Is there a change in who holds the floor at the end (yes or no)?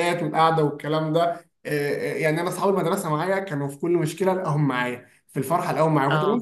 no